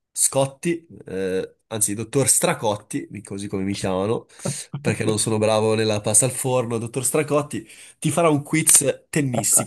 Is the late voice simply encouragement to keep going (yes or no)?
yes